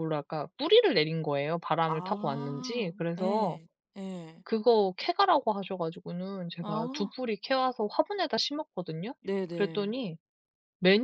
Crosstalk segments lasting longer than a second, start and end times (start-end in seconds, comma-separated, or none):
1.9-3.6